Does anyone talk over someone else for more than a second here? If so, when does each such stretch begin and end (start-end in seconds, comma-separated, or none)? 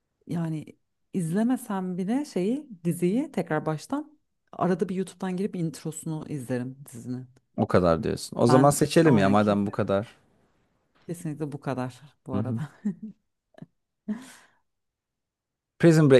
8.5-9.8